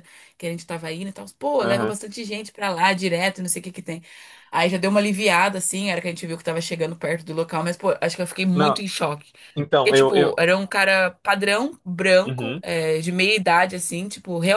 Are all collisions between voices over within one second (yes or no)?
yes